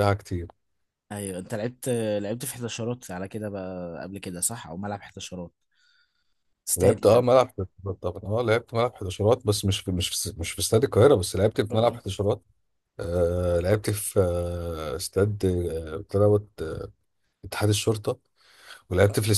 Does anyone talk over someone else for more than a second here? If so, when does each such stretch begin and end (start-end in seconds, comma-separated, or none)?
none